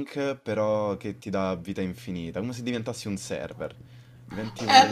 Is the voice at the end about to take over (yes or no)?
yes